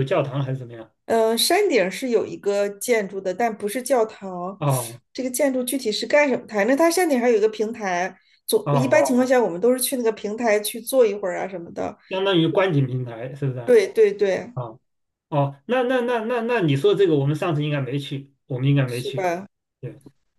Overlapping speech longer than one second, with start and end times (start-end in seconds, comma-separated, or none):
none